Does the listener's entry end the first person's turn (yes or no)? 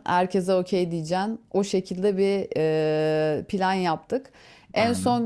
no